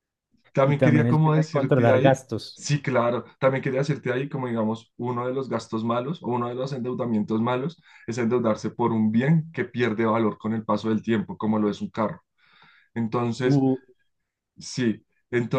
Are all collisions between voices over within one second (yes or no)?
no